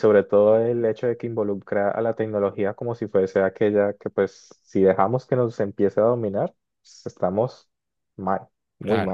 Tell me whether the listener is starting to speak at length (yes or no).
yes